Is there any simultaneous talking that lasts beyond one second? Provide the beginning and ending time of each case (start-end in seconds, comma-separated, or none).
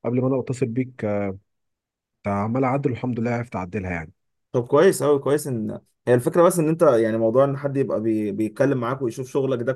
none